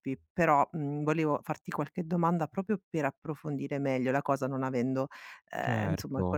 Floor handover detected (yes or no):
no